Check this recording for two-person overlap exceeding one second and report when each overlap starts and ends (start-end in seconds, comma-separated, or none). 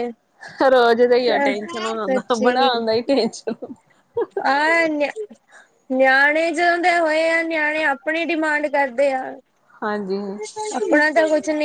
1.3-2.7